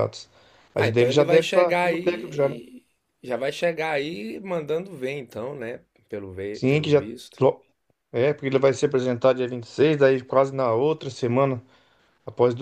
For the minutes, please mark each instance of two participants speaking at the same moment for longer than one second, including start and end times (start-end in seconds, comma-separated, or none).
0.8-2.6